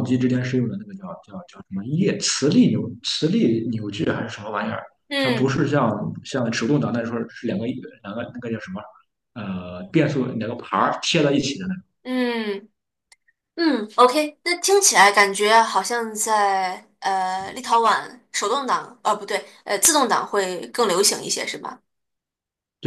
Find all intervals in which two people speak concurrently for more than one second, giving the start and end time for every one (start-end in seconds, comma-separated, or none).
none